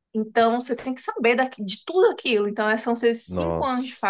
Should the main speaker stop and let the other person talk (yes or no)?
no